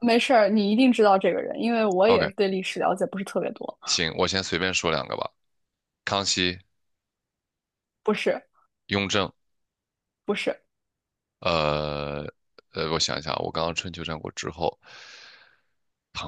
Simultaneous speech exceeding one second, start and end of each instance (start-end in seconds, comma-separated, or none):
none